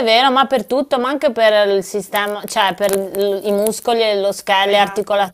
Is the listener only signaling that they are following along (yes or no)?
yes